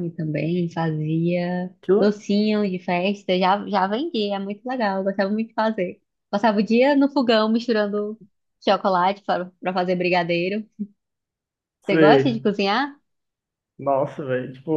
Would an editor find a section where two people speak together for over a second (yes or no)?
no